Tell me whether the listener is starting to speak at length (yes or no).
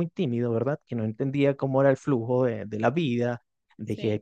no